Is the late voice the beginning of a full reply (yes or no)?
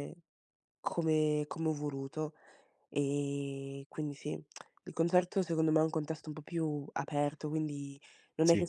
no